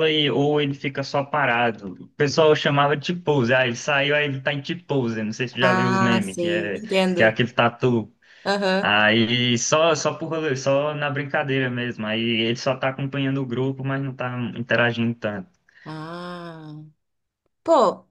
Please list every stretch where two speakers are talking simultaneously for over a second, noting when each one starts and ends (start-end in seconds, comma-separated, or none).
5.6-7.3